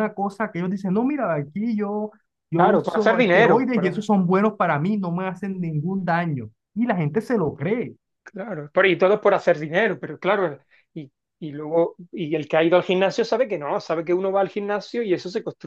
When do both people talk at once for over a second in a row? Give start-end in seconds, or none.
2.5-4.0